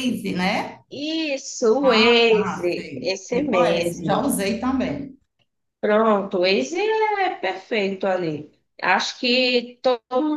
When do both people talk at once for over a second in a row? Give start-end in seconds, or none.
1.8-4.3